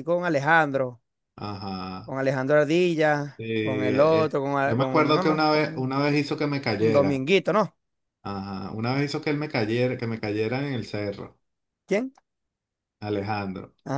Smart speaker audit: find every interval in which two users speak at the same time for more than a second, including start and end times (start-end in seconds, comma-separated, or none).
3.4-6.0